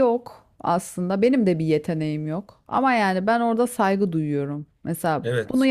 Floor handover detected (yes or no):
no